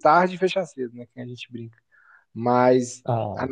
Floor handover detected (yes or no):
no